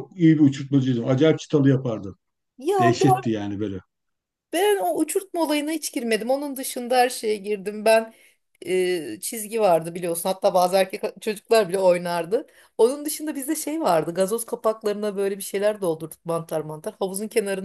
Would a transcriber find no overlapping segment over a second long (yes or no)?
yes